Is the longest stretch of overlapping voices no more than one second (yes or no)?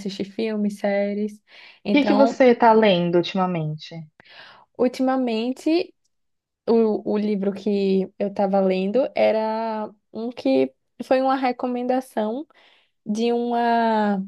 yes